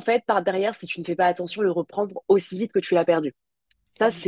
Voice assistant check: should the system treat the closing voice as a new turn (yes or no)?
no